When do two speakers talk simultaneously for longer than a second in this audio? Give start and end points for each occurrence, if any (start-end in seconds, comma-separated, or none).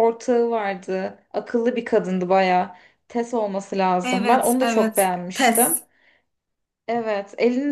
4.0-5.8